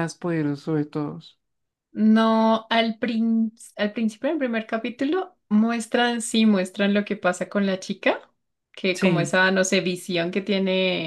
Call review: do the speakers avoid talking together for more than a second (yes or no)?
yes